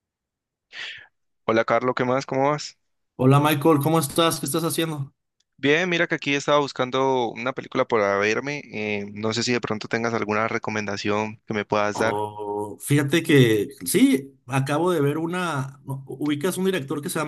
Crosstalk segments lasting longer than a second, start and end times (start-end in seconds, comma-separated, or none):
none